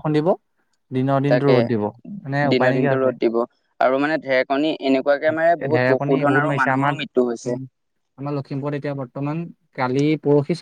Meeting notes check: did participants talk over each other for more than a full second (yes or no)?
yes